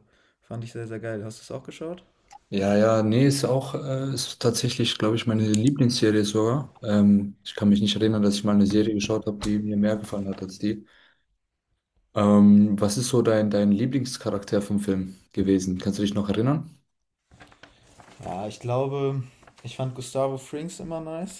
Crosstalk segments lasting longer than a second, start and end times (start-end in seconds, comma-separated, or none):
none